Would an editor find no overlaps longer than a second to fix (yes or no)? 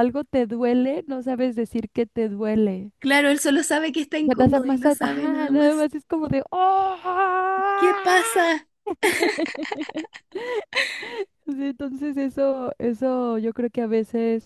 no